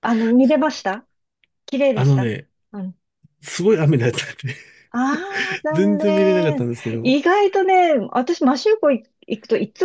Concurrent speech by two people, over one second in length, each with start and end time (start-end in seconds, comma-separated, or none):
5.7-7.2